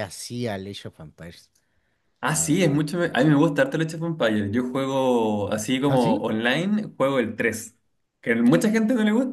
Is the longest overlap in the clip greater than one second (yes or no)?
no